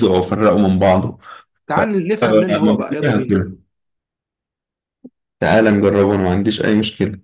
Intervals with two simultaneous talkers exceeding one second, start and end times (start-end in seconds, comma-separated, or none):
1.7-3.4